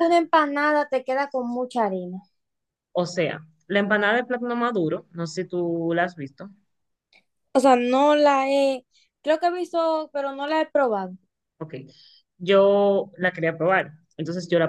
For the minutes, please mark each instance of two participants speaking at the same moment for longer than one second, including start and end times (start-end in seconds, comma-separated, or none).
none